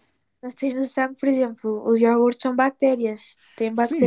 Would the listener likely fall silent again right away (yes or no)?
no